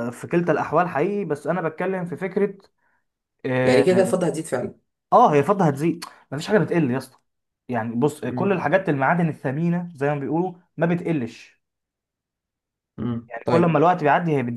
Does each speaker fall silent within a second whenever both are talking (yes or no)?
yes